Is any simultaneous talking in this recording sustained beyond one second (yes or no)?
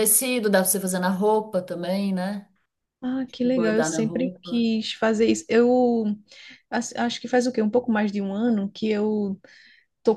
yes